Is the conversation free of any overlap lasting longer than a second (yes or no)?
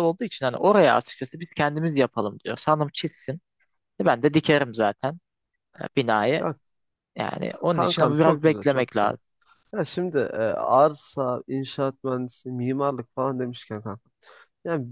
no